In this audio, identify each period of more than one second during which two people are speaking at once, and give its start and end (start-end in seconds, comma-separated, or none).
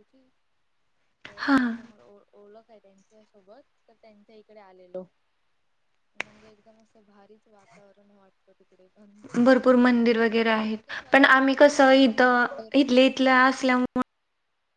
10.3-12.8